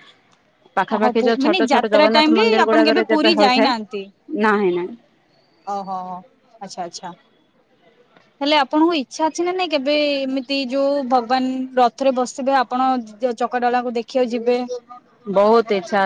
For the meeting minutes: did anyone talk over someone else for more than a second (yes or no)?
yes